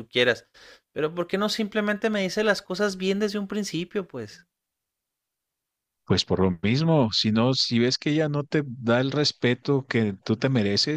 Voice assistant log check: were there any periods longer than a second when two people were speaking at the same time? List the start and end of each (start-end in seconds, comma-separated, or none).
none